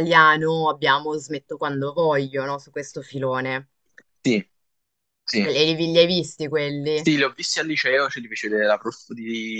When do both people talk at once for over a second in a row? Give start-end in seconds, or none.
none